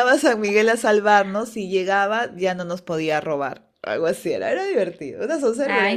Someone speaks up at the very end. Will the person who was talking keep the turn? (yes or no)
no